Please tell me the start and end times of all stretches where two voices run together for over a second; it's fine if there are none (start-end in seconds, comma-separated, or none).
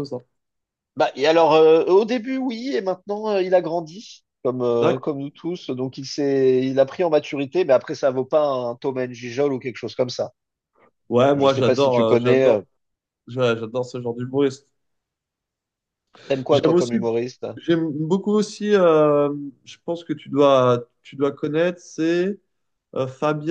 11.3-12.6